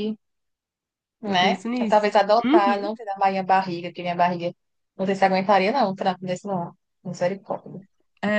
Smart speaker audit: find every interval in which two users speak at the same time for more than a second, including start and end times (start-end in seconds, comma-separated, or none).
1.3-2.9